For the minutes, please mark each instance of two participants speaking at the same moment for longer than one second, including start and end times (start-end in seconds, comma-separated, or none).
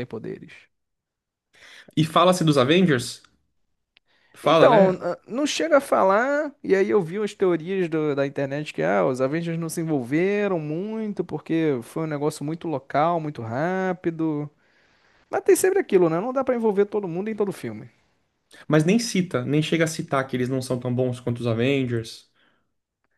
none